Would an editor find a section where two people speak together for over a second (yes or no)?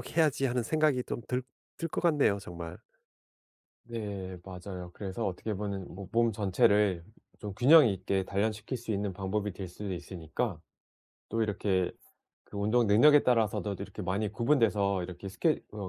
no